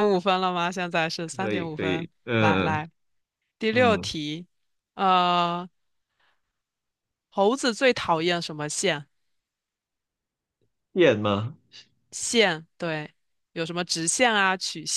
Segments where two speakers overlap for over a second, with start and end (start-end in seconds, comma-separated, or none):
1.2-2.8